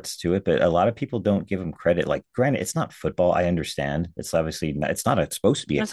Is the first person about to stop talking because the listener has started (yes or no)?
yes